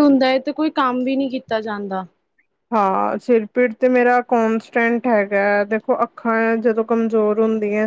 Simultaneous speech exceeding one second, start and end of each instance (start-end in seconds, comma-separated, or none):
none